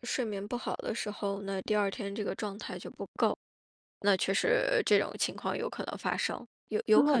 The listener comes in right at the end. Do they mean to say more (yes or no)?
yes